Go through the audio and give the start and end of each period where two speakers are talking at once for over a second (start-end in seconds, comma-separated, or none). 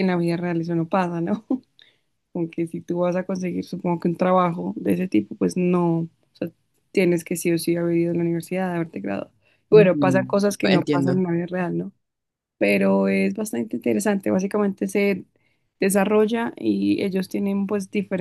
9.7-11.2